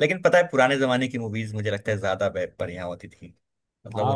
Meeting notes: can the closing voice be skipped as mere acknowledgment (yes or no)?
no